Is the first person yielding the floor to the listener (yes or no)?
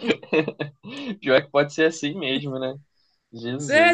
yes